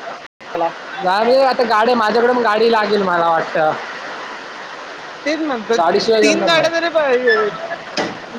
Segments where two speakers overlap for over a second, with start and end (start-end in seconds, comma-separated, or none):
none